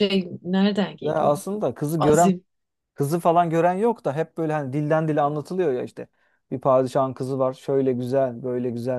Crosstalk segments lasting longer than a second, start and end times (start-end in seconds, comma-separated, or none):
none